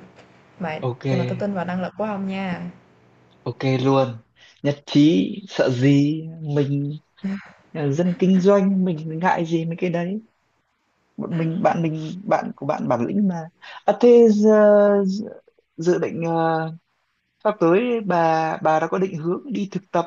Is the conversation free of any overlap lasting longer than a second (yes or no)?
yes